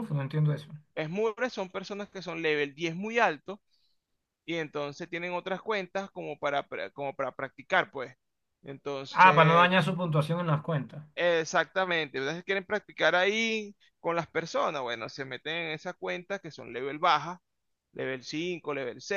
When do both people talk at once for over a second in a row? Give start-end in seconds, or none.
none